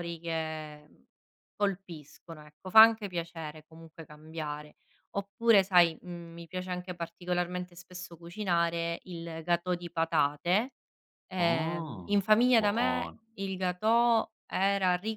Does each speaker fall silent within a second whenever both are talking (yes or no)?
no